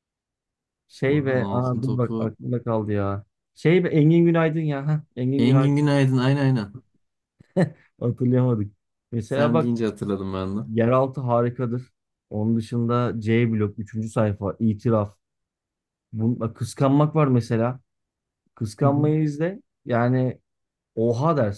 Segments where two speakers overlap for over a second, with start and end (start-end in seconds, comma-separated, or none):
1.1-2.4